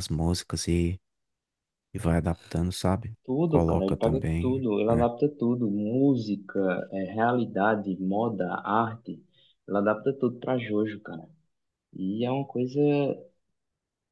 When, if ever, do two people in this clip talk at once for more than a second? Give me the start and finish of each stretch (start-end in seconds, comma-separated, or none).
3.2-5.0